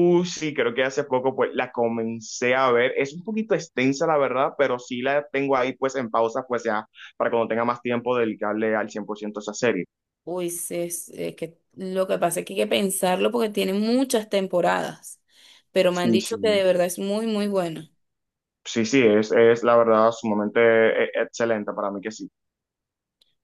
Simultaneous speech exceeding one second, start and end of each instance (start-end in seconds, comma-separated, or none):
none